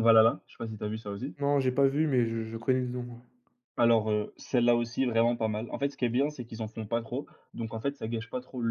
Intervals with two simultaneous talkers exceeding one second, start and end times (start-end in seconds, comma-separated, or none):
none